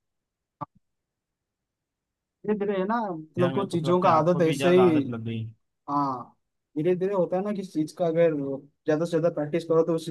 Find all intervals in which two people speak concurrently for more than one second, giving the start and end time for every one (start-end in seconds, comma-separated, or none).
3.4-4.9